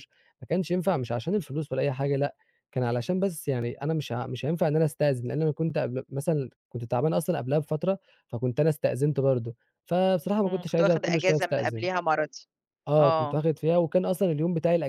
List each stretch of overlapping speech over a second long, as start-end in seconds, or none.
10.5-11.9